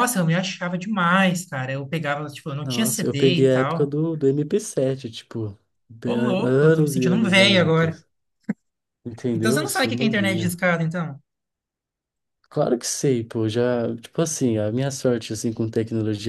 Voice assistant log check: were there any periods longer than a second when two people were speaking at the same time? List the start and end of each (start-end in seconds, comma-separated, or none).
2.6-4.0, 6.0-8.0, 9.3-10.6